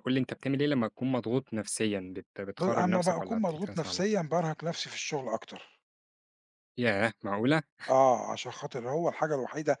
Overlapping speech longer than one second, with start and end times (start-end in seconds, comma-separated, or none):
2.6-4.0